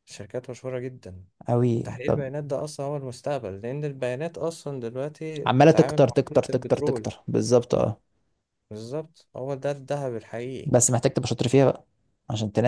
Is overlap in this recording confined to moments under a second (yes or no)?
no